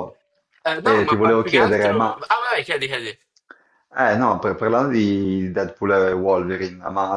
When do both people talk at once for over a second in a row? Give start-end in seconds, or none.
0.8-2.2